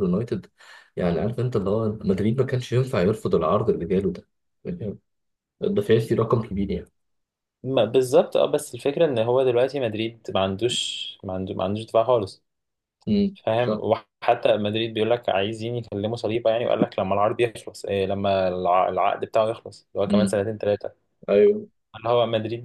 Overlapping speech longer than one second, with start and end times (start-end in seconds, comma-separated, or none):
none